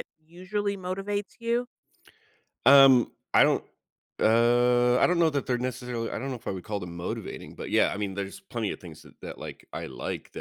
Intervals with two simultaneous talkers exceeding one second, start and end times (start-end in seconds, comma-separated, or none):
none